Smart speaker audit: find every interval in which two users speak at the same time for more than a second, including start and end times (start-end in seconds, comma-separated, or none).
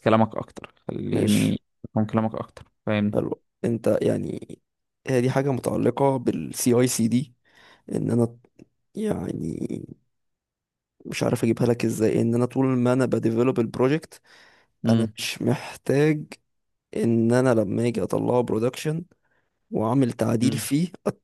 none